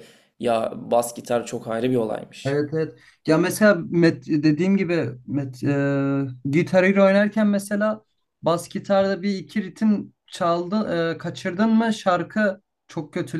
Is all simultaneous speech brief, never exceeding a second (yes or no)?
yes